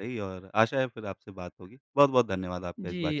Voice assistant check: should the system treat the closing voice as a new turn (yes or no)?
yes